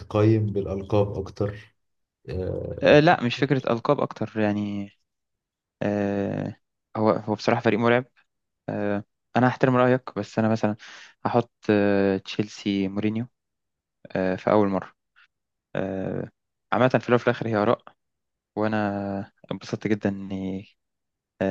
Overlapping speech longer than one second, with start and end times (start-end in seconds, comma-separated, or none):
none